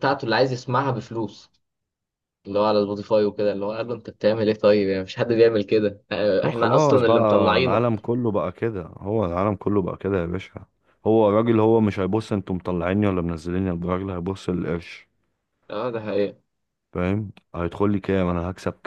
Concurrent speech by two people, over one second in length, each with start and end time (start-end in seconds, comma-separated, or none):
6.4-7.8